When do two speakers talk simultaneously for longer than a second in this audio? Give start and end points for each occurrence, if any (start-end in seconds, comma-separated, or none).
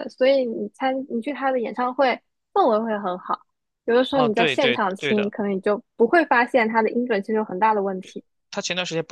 4.1-5.3